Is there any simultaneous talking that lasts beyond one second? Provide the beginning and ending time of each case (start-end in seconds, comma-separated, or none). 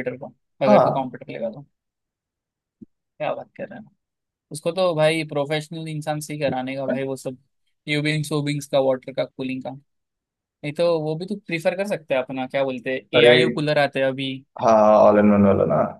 none